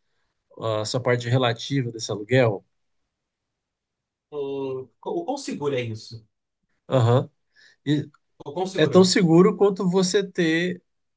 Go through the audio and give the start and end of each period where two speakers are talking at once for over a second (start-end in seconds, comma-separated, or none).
none